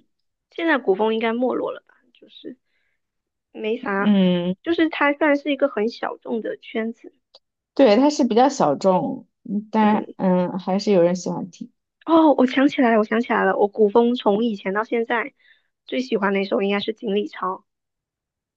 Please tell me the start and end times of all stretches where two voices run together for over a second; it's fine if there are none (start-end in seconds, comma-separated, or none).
none